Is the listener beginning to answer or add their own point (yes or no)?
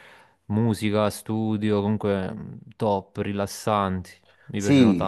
yes